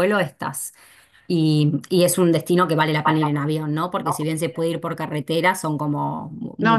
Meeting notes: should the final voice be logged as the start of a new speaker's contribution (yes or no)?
yes